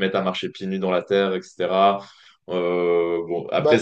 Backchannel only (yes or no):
yes